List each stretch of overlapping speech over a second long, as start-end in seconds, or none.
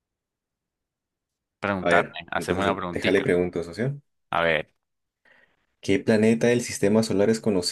1.8-3.3